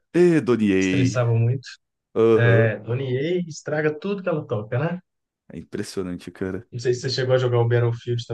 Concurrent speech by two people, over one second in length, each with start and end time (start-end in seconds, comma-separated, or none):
none